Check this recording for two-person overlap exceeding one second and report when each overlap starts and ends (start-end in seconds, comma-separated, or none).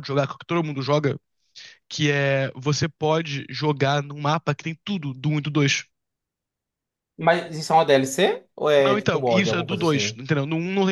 8.8-10.2